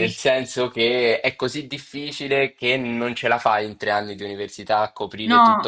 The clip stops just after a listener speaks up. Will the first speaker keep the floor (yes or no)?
no